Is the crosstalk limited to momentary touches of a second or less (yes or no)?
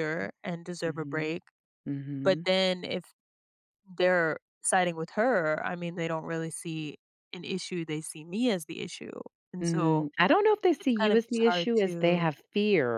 no